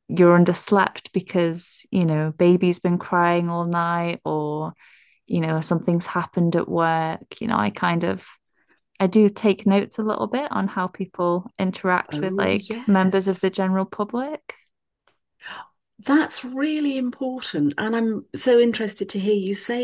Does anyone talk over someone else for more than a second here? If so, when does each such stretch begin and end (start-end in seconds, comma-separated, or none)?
12.1-13.5